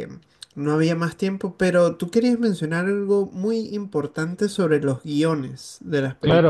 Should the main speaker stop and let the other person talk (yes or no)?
yes